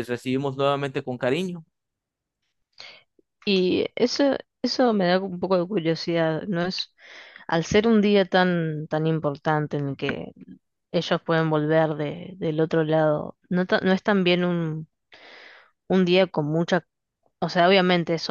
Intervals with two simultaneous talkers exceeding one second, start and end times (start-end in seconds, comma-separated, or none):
none